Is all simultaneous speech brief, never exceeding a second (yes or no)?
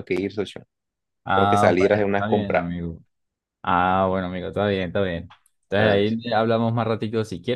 no